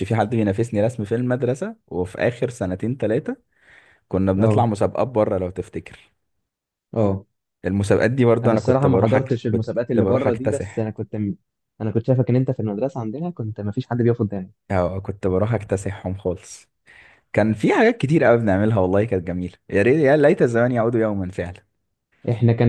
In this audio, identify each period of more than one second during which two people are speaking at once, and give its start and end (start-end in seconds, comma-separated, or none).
8.4-10.9